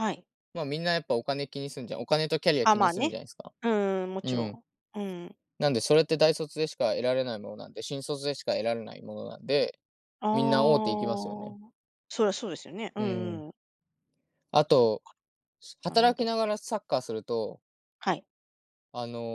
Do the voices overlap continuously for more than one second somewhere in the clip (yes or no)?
yes